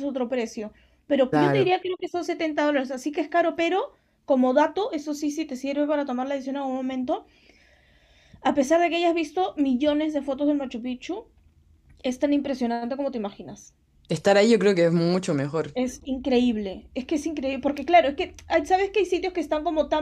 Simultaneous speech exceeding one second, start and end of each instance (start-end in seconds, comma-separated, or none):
none